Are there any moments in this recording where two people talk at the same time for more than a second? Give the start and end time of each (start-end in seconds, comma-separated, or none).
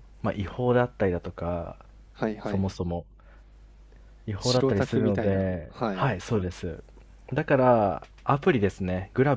4.4-6.1